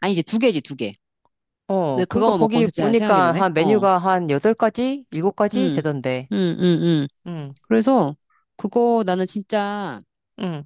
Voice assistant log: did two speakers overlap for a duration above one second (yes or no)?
yes